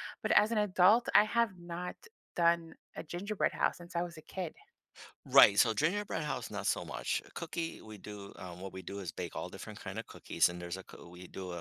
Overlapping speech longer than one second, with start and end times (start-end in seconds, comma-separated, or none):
none